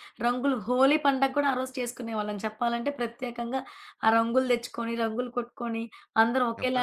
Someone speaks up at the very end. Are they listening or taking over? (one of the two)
listening